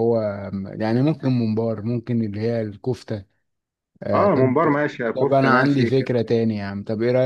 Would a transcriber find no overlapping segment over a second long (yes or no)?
no